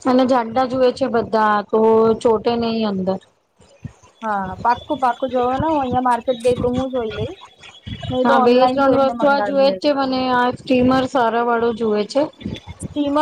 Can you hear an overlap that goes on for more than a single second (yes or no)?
yes